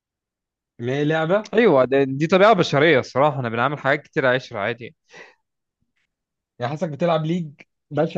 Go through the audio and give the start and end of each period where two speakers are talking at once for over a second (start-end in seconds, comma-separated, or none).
none